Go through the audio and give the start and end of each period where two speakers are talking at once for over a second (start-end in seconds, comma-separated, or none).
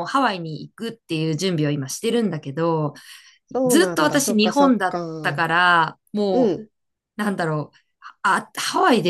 3.6-5.4